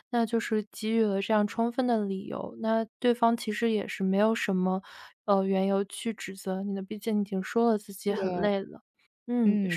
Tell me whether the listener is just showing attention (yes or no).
no